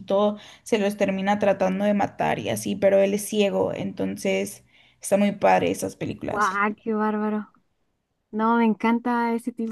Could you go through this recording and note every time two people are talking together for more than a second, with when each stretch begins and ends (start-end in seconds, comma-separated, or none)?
none